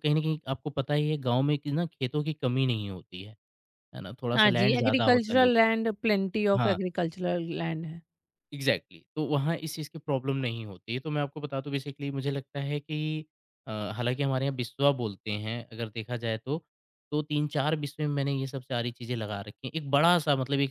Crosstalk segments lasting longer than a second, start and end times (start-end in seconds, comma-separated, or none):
4.3-5.6